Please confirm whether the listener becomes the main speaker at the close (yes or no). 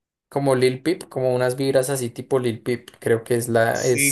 yes